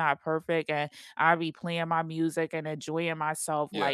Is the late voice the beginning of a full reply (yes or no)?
no